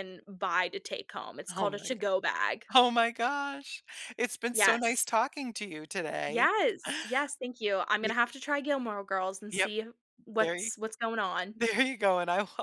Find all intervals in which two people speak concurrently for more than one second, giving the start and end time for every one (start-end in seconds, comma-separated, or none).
none